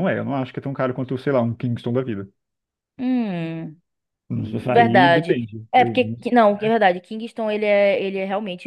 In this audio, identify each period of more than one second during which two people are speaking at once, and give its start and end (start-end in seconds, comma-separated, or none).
4.3-6.0